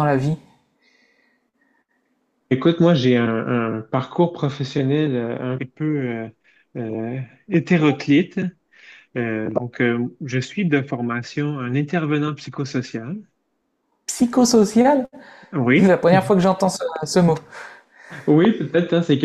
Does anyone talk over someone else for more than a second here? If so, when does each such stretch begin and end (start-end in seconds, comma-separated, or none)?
none